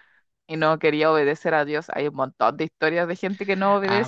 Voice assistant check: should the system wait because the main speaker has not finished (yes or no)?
no